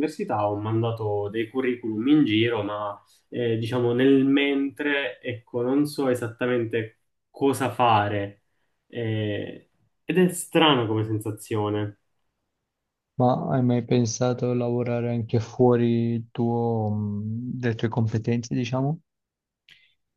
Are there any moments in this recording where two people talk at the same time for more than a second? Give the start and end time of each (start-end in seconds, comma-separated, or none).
none